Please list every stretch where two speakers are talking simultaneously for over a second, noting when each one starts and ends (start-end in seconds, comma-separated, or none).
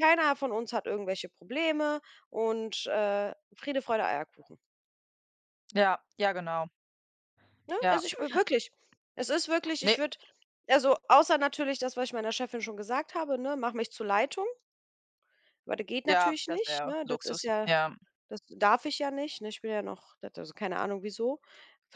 16.1-17.7